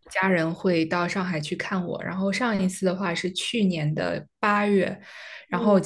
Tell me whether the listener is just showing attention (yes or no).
yes